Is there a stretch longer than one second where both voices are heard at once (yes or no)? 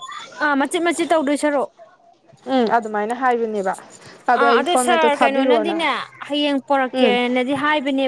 yes